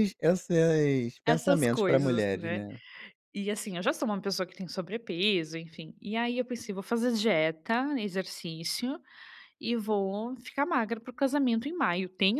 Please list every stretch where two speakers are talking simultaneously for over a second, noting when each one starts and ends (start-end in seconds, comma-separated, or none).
1.2-2.6